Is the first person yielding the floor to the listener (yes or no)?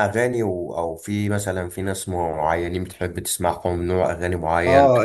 yes